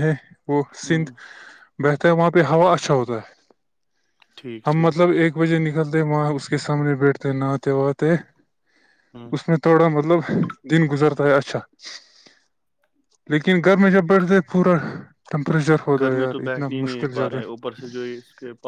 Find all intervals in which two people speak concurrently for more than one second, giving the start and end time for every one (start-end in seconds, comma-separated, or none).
16.0-17.6